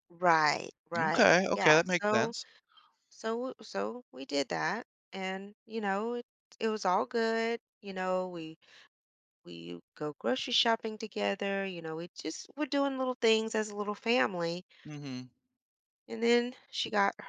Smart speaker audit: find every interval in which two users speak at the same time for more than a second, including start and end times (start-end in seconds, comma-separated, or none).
1.0-2.3